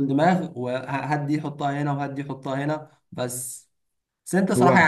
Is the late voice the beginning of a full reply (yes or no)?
no